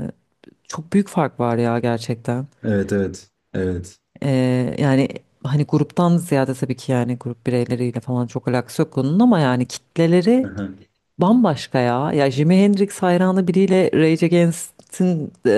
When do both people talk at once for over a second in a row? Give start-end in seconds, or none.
none